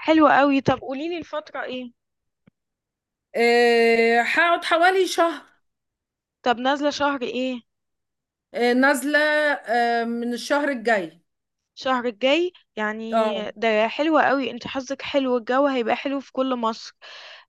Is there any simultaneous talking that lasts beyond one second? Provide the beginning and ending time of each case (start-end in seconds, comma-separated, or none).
none